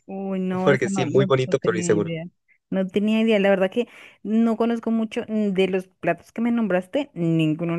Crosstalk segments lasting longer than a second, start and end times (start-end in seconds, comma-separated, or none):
0.6-2.1